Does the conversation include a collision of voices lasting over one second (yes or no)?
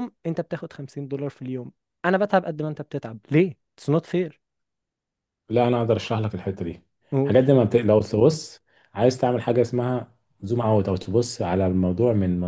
no